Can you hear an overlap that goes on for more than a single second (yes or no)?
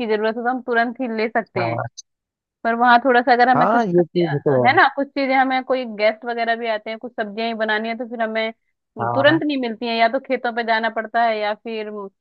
yes